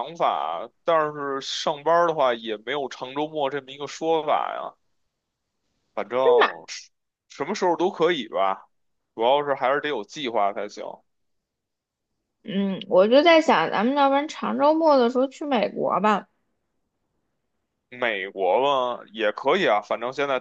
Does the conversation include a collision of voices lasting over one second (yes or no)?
no